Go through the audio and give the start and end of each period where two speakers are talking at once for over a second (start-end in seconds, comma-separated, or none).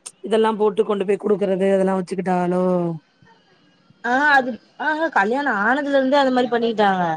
none